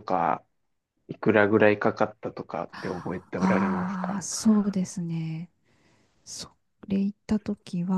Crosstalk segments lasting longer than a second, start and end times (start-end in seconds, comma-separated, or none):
2.7-4.2